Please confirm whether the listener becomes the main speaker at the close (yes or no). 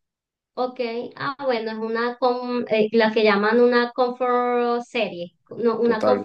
no